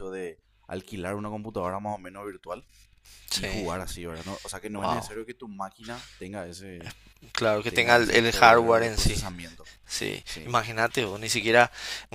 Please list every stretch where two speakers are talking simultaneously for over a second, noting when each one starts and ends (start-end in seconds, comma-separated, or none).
7.7-9.2